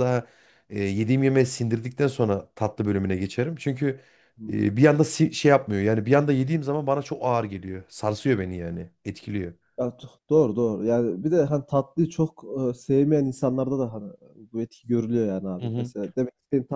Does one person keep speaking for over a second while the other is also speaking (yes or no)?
no